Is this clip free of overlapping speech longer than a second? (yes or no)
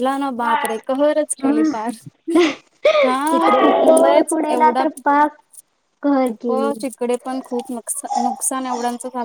no